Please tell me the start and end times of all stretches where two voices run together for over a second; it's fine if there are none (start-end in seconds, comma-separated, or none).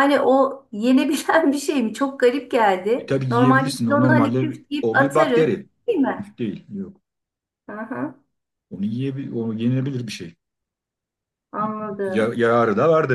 3.0-5.5